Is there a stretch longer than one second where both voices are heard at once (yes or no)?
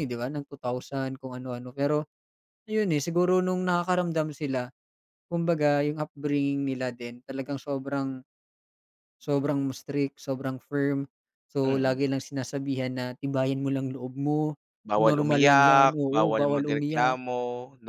yes